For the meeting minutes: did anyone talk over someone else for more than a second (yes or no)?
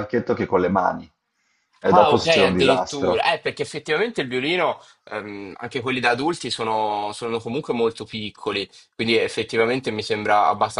yes